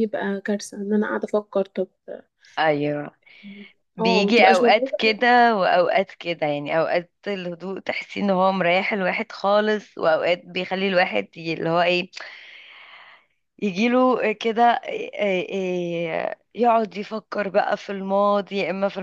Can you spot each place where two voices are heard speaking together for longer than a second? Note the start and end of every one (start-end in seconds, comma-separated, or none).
4.0-5.2